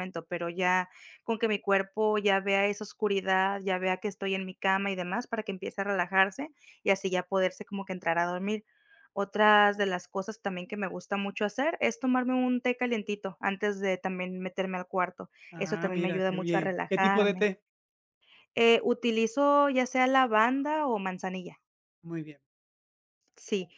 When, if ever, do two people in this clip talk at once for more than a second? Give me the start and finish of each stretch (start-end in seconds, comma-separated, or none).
15.5-17.5